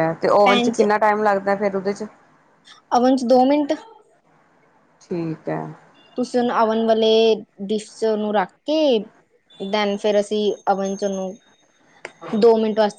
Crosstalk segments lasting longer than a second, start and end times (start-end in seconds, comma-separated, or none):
none